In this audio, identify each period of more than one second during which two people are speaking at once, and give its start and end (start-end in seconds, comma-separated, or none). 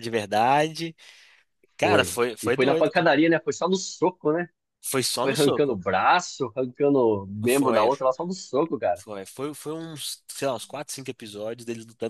1.8-3.1